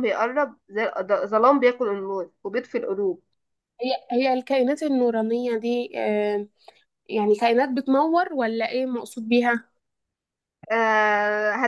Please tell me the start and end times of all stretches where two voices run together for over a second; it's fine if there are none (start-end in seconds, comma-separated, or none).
none